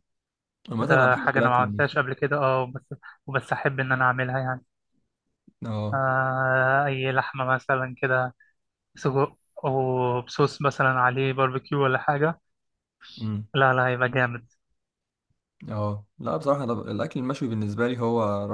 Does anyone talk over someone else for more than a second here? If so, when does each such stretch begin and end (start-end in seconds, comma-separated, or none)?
0.8-2.0